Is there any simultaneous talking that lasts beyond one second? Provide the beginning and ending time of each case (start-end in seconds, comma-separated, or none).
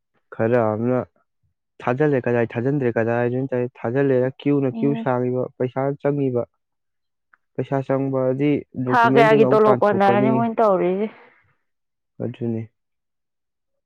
8.9-10.3